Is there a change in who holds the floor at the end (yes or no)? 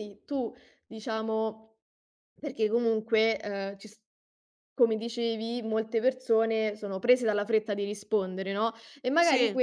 no